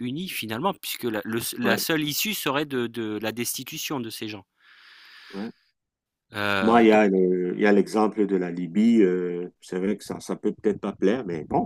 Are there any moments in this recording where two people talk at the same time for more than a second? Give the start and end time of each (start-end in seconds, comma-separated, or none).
none